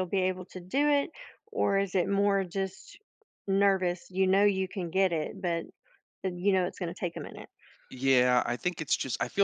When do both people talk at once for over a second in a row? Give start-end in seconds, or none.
none